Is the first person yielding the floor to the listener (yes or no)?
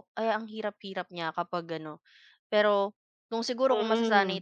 no